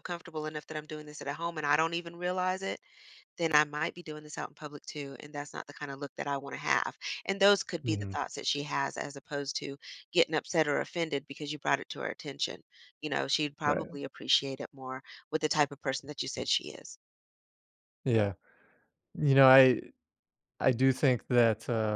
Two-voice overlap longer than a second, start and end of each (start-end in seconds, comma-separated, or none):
none